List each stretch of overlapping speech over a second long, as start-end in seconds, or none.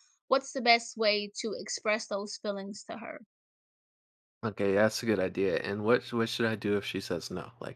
none